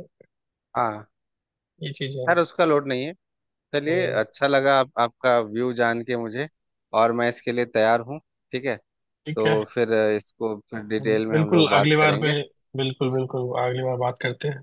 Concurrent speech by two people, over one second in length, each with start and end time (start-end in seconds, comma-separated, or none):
11.0-12.3